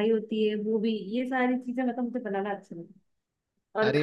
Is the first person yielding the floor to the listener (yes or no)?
no